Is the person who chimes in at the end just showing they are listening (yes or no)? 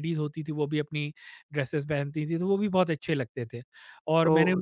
no